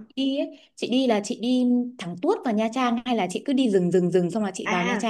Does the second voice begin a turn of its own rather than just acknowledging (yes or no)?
yes